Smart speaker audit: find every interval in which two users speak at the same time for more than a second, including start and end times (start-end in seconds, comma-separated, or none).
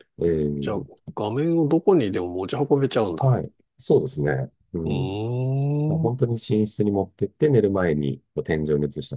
none